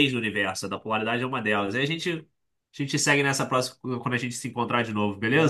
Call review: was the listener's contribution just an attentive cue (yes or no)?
no